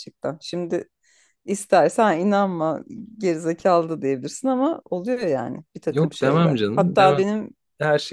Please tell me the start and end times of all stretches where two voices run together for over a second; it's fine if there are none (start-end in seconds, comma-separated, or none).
5.9-7.2